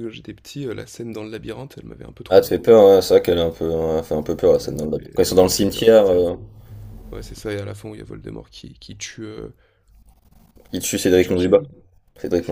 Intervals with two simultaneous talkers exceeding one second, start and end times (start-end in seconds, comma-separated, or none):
4.6-6.3